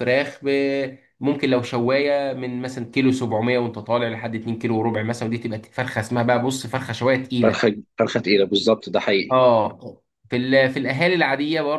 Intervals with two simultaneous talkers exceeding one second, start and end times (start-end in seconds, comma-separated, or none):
none